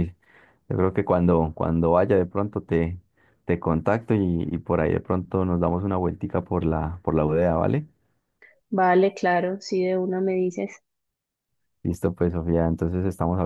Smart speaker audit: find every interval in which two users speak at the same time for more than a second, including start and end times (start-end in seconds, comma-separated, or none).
none